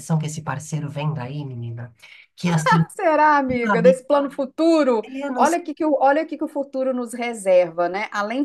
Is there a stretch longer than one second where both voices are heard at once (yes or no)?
no